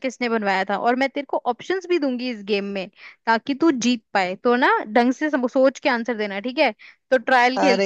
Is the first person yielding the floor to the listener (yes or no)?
yes